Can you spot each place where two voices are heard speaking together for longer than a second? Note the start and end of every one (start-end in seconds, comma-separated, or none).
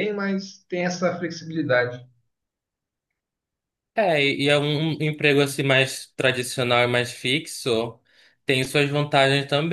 none